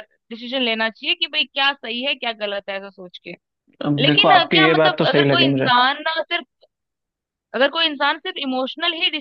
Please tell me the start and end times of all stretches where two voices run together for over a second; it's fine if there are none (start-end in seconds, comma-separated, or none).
4.0-5.7